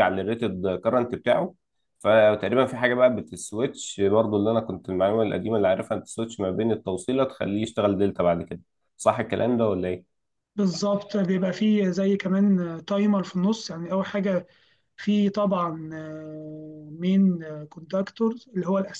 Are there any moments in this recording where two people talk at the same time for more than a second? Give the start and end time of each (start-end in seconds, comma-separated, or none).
none